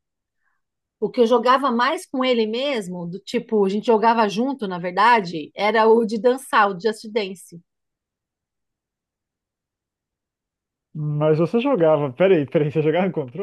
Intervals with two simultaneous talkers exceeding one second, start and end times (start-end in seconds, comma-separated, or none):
none